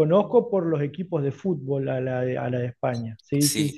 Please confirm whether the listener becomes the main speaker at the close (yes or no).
yes